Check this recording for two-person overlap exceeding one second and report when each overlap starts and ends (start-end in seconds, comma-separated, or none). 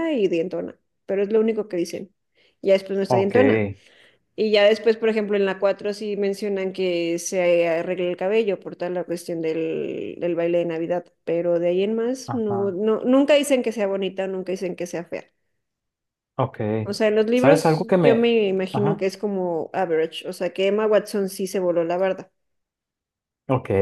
17.3-19.0